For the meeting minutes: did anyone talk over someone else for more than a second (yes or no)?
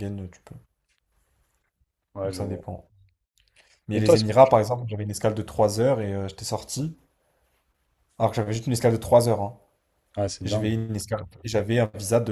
no